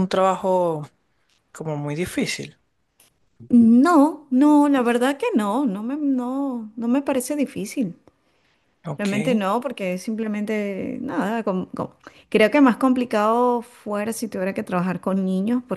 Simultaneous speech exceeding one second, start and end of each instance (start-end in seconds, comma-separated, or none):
none